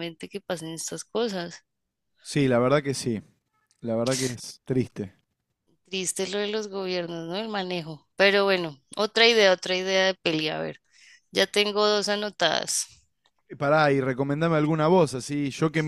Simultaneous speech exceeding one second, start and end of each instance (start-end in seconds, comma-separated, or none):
none